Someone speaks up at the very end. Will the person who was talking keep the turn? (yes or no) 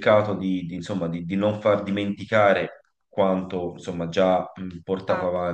yes